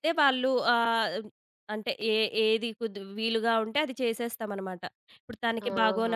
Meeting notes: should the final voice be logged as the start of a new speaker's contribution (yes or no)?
no